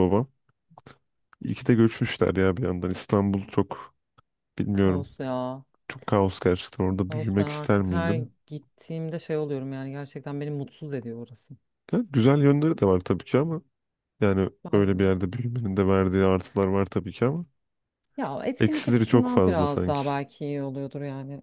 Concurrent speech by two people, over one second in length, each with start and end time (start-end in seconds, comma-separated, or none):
7.1-8.3, 18.6-20.0